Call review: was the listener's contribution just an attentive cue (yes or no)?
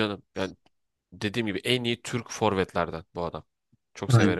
no